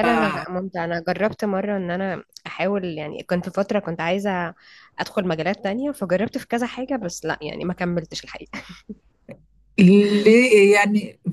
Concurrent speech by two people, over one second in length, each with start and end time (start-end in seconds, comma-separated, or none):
none